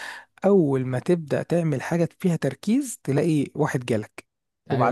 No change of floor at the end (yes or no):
yes